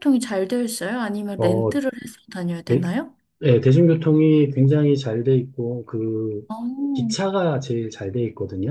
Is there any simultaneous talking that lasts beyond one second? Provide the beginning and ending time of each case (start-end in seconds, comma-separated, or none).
none